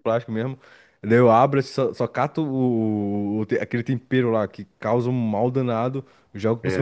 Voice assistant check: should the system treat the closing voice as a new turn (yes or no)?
no